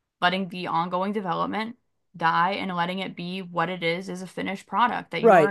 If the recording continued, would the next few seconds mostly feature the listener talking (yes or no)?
yes